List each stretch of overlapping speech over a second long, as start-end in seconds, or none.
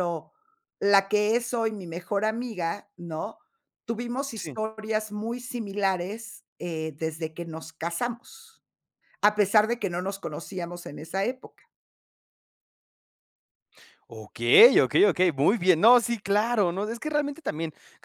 none